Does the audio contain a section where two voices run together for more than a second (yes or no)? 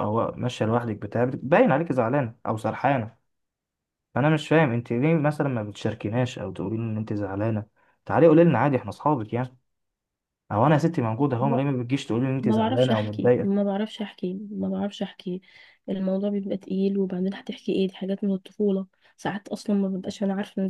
yes